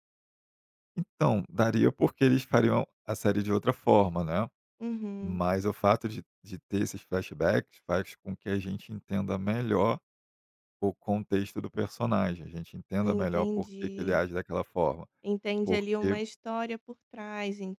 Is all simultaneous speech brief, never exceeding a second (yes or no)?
no